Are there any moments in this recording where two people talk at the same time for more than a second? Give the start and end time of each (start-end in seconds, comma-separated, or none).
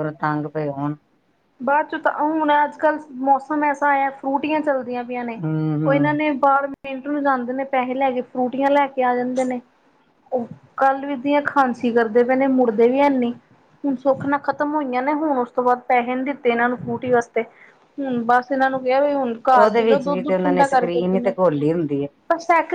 19.6-21.3